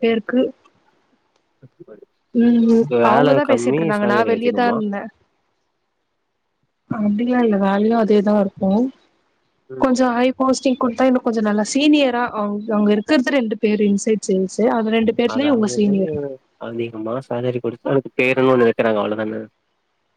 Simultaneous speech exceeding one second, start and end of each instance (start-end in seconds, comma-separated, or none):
2.6-4.7